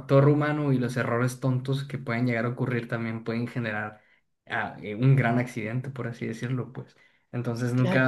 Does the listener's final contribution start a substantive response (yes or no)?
no